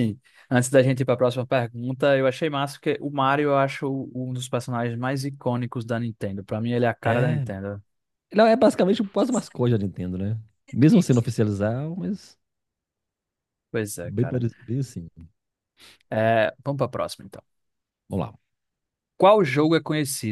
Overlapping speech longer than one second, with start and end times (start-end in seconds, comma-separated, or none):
none